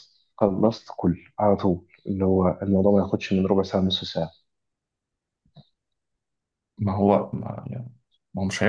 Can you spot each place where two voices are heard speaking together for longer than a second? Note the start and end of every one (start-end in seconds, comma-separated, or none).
none